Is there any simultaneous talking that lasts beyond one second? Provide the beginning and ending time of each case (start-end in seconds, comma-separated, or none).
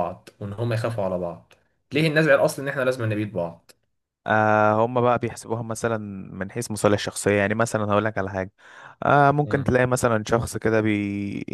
none